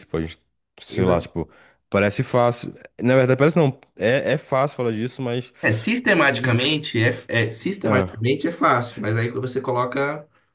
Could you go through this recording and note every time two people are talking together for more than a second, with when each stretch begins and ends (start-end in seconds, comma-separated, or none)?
none